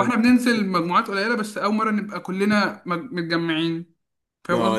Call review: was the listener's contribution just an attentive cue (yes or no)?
no